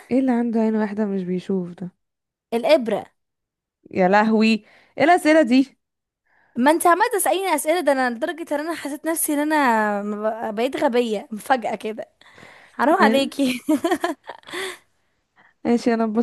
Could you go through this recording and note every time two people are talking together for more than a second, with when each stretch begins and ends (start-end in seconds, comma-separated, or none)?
none